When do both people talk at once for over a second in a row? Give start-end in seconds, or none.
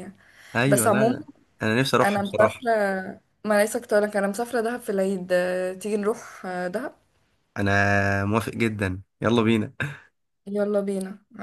none